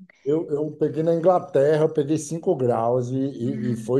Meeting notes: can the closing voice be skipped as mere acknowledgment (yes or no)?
yes